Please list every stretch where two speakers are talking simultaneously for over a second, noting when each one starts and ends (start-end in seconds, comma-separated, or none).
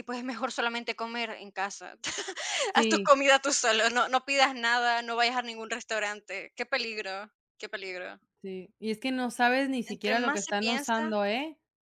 9.8-11.1